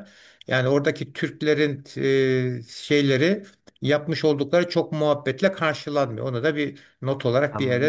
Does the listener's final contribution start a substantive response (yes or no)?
yes